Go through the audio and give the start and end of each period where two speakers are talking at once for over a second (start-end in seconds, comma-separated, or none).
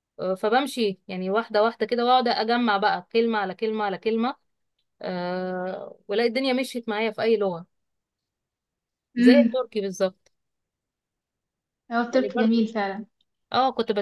none